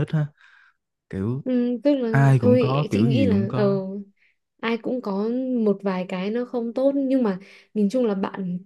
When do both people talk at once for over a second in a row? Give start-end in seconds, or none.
2.1-3.8